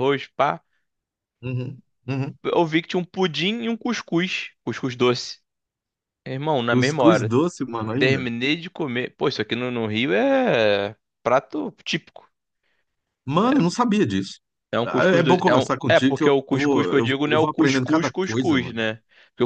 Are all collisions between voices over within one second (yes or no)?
no